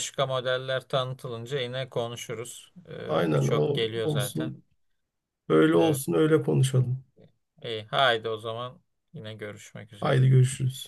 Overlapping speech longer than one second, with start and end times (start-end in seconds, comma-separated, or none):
3.0-4.5